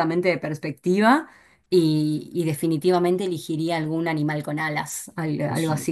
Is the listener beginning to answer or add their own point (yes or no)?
no